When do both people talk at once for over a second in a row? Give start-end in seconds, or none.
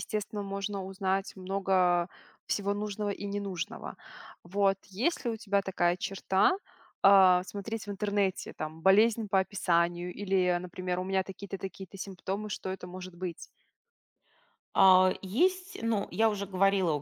none